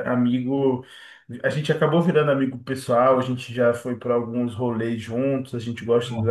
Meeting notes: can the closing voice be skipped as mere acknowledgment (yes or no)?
yes